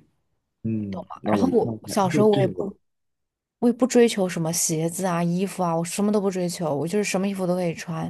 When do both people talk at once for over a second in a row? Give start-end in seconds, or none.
0.9-2.7